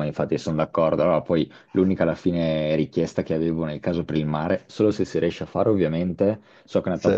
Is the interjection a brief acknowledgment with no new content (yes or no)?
yes